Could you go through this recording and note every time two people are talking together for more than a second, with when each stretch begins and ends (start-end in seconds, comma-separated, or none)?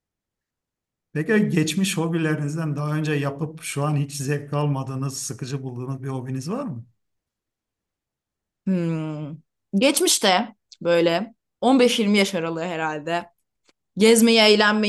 none